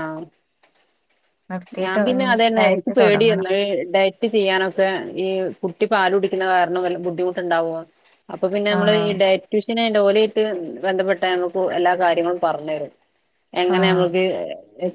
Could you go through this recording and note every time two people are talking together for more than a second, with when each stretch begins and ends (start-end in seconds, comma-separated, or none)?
1.8-3.5